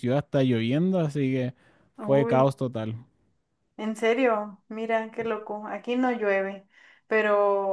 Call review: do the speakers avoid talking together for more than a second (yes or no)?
yes